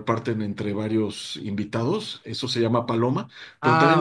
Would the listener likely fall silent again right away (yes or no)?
yes